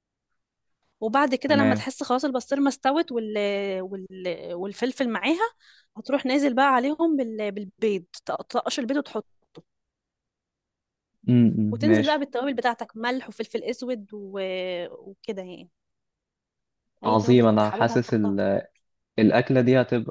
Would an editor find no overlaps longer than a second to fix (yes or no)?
no